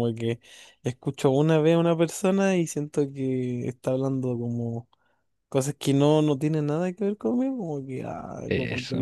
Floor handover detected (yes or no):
no